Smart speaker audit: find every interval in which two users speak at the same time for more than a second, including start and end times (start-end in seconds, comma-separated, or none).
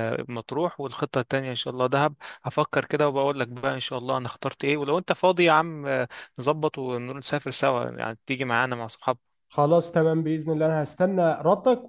none